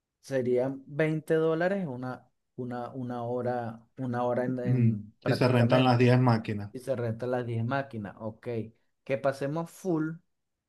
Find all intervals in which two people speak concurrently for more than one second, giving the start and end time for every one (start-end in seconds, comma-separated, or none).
4.6-6.1